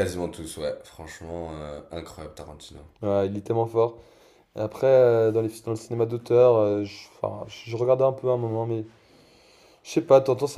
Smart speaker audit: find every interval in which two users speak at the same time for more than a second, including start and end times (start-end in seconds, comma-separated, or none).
none